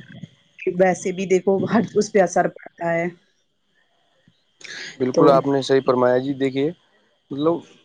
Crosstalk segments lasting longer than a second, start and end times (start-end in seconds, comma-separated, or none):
none